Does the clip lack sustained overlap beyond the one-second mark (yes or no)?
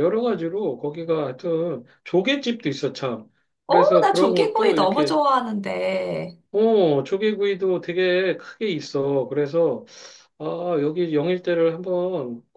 no